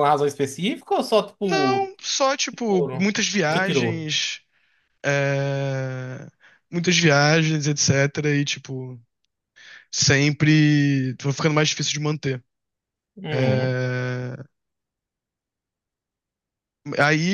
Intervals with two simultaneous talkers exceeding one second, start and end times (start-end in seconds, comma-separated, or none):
2.7-4.1